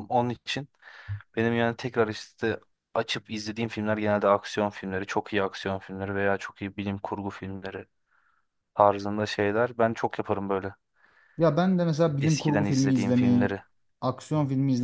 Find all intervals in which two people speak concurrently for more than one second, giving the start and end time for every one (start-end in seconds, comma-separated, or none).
12.2-13.6